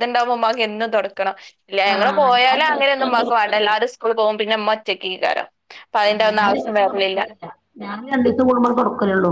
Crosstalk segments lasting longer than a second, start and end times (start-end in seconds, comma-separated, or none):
1.9-3.7